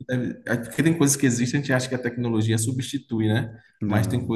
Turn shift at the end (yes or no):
no